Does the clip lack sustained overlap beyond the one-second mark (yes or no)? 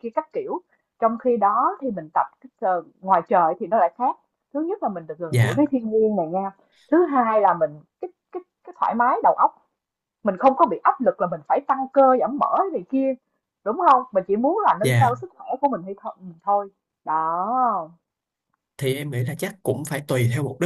yes